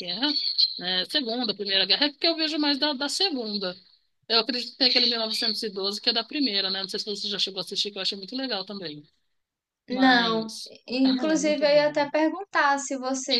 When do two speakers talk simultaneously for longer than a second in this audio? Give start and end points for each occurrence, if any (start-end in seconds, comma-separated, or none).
9.9-12.1